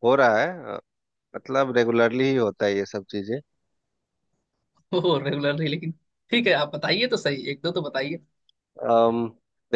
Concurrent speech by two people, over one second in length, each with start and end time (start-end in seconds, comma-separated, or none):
none